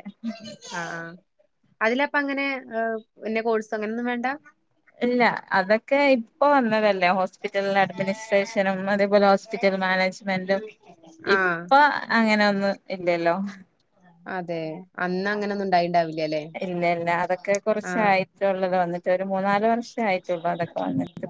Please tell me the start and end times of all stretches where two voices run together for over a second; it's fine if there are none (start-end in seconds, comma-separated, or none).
none